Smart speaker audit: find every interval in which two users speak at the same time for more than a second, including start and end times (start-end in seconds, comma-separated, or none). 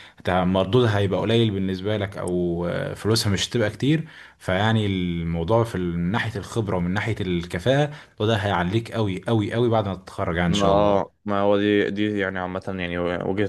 none